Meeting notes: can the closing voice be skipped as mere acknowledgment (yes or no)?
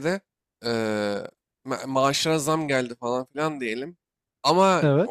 yes